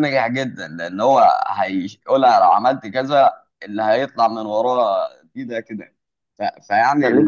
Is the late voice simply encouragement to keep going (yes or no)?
no